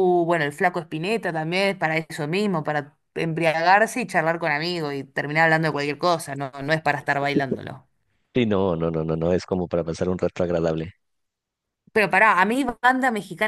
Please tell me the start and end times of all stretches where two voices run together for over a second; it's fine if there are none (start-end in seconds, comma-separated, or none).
none